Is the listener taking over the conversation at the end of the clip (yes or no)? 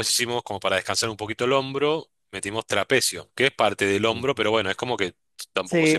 yes